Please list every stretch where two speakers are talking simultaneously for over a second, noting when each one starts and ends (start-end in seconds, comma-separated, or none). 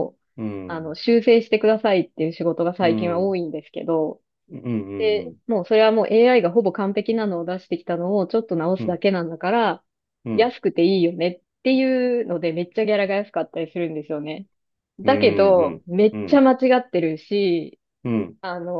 15.0-16.4